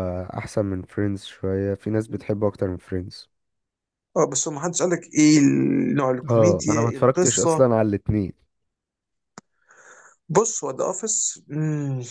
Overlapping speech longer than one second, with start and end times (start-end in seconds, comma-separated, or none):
6.3-7.7